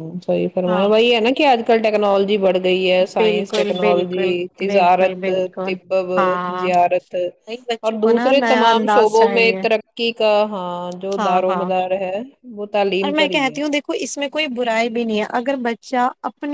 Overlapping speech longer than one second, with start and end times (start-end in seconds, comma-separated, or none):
3.2-5.3, 7.9-9.6